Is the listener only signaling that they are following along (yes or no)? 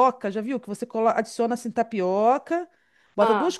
yes